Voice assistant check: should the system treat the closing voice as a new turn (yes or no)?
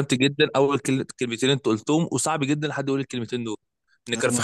no